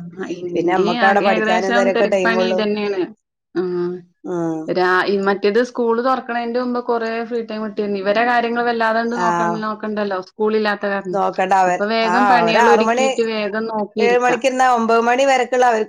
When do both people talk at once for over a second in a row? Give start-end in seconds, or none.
0.5-2.6